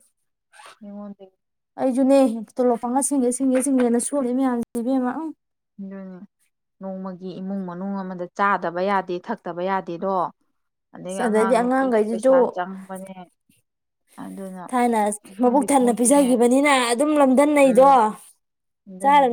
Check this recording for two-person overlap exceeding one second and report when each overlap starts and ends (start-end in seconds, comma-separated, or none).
11.1-12.3